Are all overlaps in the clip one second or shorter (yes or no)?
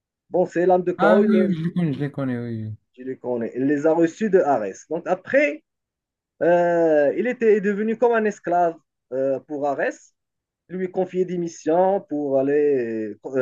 yes